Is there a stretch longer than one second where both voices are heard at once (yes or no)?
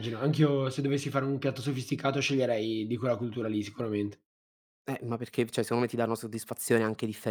no